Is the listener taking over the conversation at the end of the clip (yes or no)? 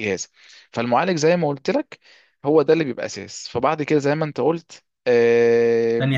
yes